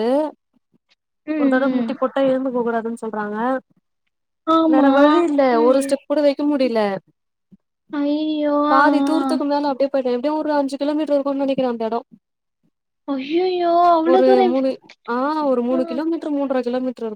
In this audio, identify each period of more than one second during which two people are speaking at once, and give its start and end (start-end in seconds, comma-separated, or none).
none